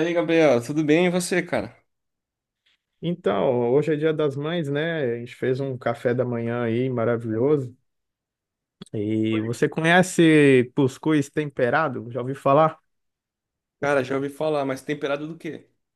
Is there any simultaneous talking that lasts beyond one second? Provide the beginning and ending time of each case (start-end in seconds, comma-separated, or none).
none